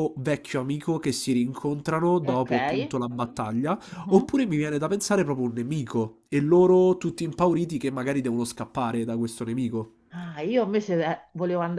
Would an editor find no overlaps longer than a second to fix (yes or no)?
yes